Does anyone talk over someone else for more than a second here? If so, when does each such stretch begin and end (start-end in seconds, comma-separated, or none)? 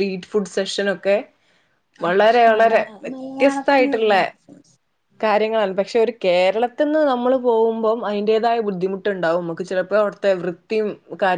2.5-4.2